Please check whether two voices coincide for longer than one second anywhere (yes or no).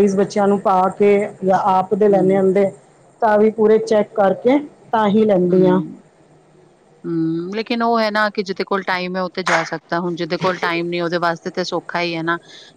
no